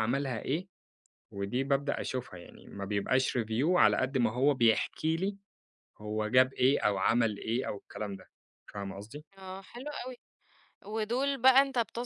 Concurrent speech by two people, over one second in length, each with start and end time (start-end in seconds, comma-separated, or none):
none